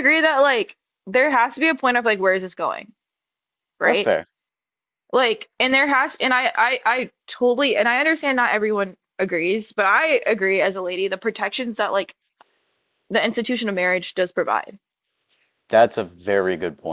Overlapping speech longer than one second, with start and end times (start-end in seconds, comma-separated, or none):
none